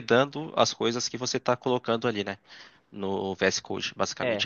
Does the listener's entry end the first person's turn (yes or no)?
yes